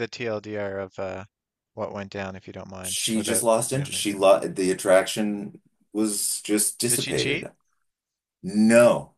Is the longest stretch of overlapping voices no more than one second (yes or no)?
no